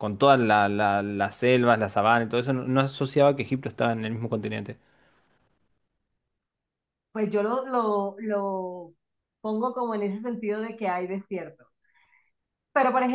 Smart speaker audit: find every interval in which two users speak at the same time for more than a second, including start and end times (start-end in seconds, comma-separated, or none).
none